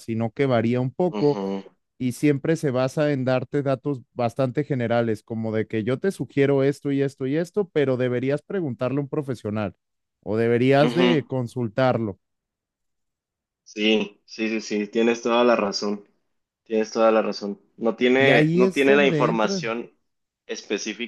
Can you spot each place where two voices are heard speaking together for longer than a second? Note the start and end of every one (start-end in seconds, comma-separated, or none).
18.2-19.6